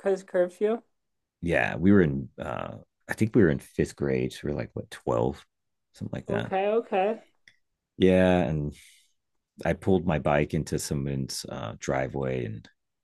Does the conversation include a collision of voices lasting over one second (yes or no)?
no